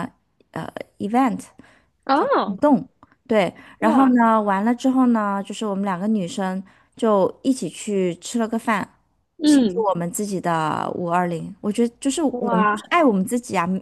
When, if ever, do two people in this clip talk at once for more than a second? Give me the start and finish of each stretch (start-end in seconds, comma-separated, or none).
none